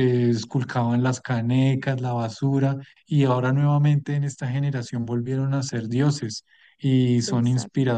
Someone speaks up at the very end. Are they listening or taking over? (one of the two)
listening